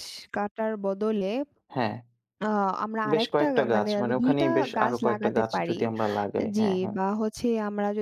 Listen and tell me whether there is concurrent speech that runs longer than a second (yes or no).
yes